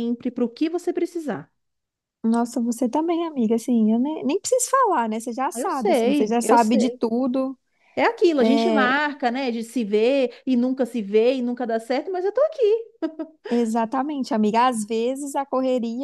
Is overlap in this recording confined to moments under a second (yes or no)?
no